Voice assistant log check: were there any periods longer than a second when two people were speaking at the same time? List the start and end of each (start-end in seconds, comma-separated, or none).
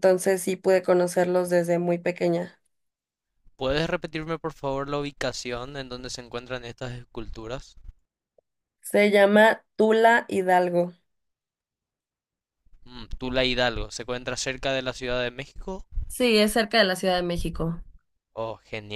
none